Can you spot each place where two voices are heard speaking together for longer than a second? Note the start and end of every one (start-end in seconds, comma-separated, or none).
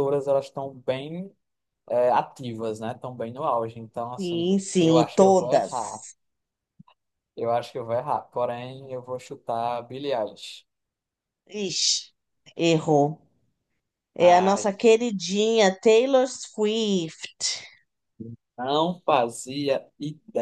4.2-6.0